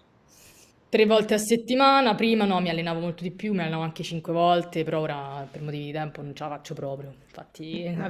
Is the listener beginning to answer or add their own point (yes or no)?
no